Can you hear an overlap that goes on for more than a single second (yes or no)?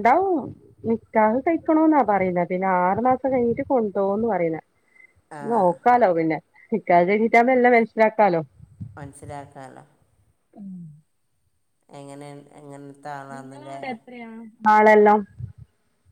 no